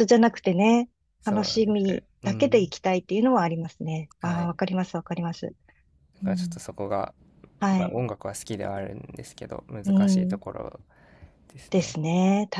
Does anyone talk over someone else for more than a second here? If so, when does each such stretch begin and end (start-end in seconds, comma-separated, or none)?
1.2-2.7